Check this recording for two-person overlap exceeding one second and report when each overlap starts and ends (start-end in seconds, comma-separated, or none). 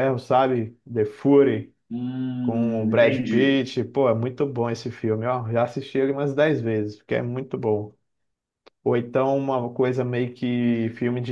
2.4-3.6